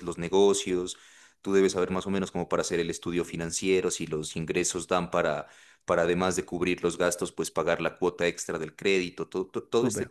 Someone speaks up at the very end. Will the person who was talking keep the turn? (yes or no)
no